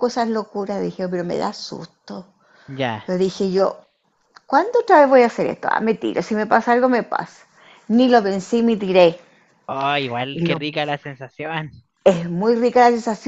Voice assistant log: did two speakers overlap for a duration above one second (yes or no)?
no